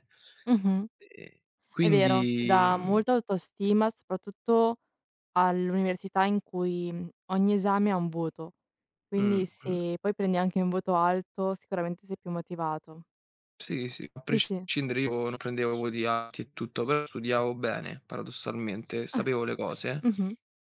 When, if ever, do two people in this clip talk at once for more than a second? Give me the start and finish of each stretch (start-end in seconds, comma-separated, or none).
1.8-3.0